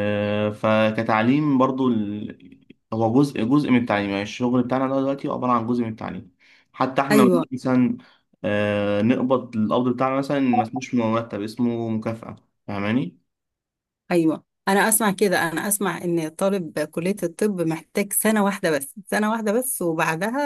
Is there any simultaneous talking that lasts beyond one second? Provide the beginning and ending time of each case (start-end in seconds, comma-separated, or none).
none